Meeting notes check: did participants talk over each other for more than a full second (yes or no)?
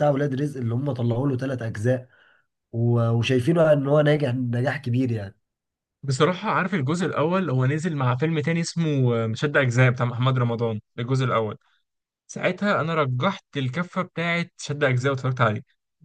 no